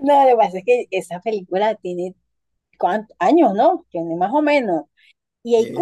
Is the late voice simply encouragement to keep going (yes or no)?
yes